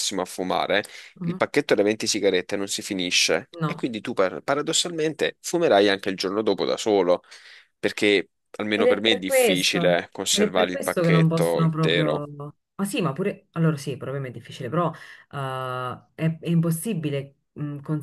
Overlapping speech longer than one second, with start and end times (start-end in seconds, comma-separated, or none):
8.7-12.3